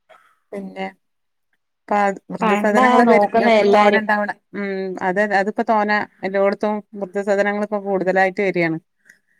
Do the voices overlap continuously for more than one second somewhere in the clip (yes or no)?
yes